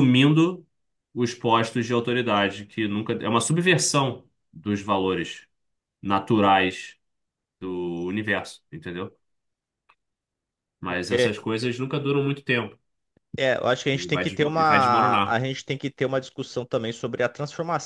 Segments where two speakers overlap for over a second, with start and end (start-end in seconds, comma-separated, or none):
13.9-15.4